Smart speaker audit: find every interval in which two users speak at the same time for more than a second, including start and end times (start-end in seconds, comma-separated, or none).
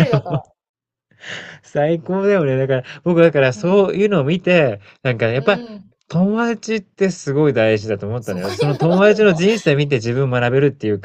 8.2-9.4